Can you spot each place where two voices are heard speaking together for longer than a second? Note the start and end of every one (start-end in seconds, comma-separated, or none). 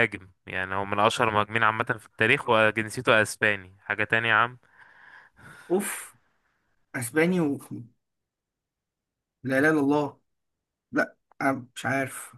none